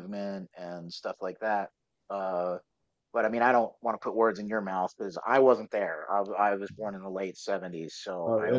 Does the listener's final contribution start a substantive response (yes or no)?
yes